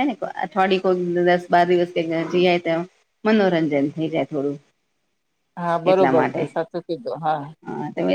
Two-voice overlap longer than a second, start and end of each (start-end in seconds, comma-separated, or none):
none